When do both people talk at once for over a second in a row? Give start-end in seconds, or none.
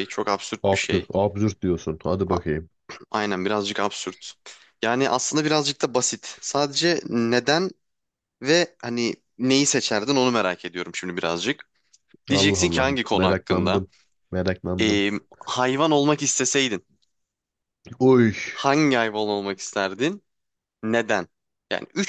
12.3-13.8